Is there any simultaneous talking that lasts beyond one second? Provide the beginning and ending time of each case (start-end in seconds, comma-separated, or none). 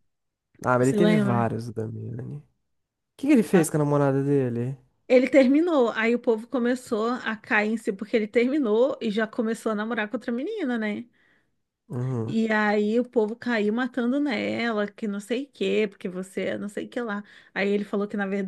none